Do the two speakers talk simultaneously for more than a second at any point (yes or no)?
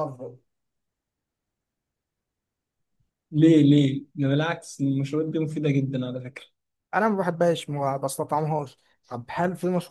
no